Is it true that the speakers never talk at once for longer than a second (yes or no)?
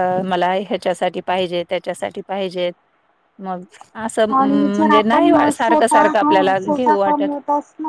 no